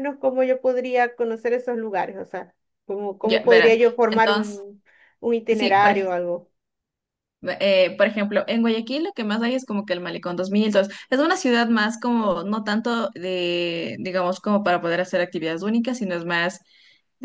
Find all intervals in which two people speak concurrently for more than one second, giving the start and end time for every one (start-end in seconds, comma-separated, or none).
3.2-4.6